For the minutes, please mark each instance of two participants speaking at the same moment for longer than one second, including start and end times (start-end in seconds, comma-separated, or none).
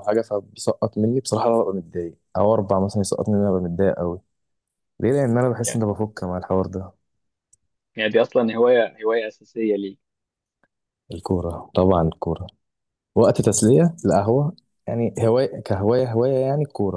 none